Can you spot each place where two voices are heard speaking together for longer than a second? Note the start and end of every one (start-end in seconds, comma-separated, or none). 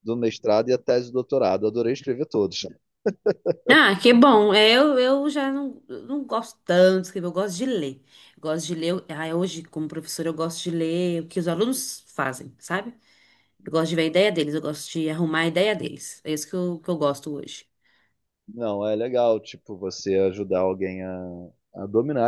none